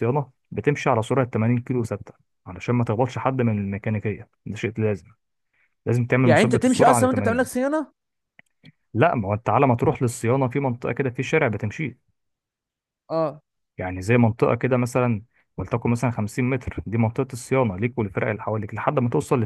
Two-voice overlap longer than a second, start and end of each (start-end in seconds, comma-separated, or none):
6.2-7.6